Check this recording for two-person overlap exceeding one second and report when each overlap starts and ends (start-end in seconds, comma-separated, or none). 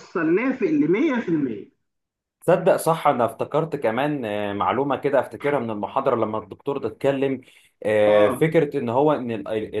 none